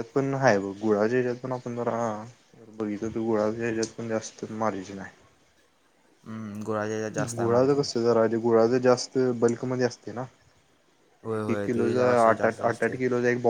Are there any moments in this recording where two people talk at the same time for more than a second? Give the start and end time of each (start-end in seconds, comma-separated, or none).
11.3-13.0